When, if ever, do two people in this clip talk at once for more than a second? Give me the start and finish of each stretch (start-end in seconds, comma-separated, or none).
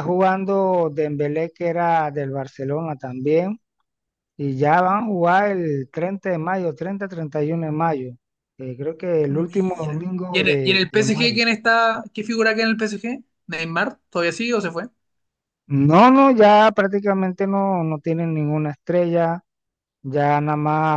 9.3-11.4